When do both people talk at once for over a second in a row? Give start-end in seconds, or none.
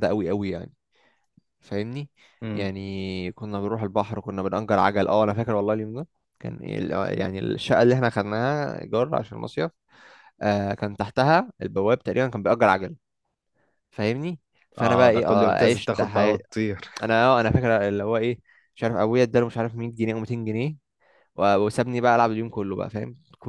14.8-16.4